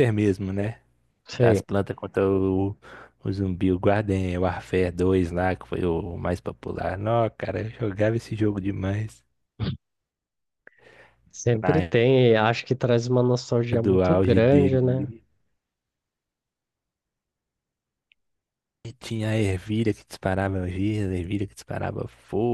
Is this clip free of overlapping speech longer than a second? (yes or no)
no